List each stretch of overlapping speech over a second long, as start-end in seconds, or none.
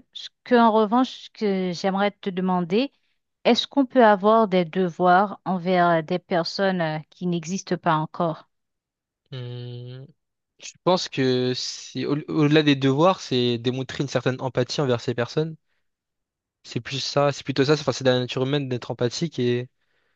none